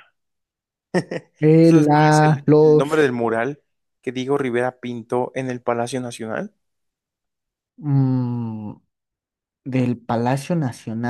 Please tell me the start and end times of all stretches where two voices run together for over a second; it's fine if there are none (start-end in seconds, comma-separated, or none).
1.6-3.1